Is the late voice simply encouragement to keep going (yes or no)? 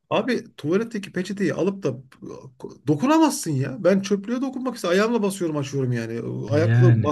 yes